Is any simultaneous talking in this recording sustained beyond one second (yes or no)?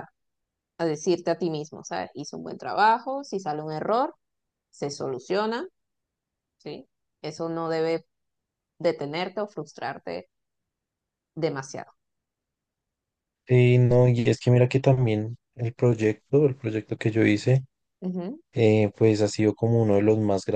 no